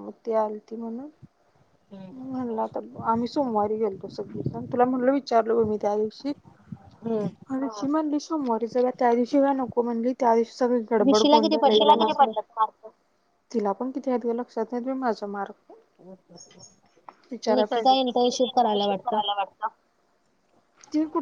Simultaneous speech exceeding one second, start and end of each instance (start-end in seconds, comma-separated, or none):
17.5-19.2